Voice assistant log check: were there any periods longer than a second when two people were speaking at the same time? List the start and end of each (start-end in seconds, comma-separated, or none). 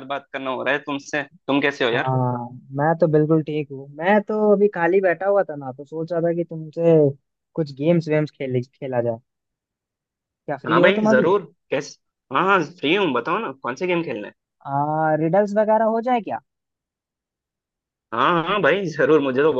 none